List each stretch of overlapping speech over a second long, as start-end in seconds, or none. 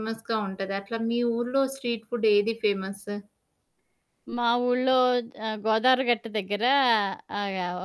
none